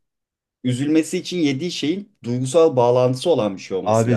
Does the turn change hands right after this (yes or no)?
yes